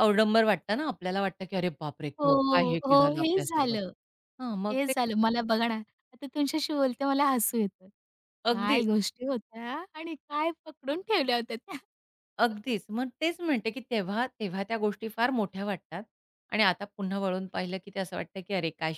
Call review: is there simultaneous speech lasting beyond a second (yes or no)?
yes